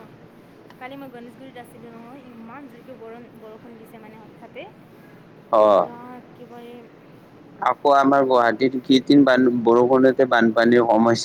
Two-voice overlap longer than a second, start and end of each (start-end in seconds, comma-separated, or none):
none